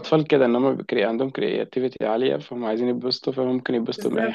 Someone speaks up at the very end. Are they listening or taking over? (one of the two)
taking over